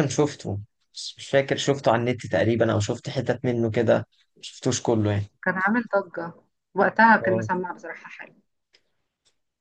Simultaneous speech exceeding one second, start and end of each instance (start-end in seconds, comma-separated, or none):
none